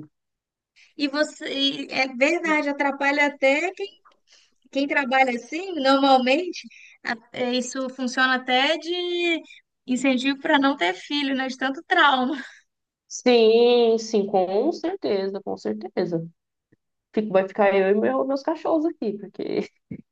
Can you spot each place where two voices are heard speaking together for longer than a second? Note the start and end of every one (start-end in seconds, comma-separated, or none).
none